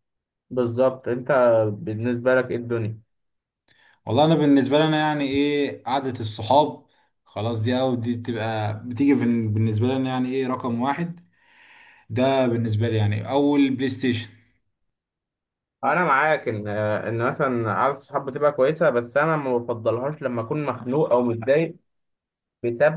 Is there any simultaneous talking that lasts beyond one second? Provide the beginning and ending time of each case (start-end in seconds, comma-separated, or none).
none